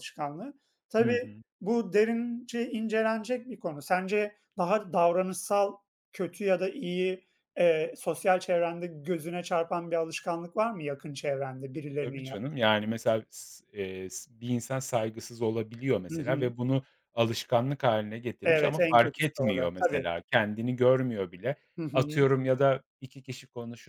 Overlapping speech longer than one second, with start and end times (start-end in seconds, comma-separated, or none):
18.4-20.0